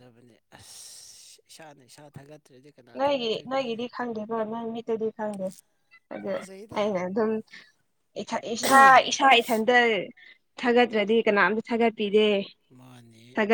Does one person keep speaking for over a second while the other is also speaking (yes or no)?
no